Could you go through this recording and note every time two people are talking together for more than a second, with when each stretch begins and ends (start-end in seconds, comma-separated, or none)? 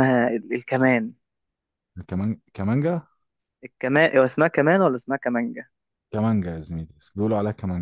none